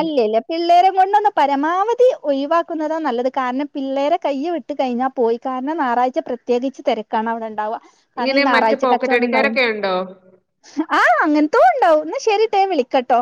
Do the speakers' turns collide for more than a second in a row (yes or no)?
yes